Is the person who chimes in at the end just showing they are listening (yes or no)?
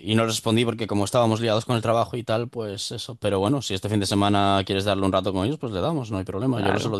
no